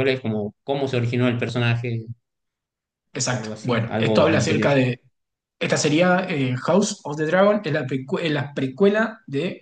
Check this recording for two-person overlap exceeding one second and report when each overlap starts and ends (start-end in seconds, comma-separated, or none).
3.3-4.7